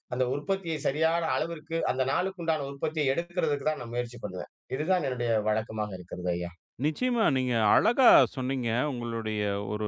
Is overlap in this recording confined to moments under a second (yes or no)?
yes